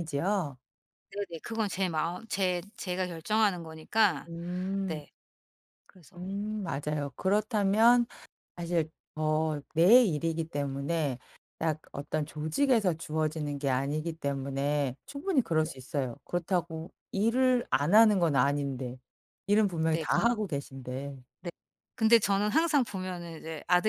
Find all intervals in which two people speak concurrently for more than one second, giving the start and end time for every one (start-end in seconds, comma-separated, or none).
none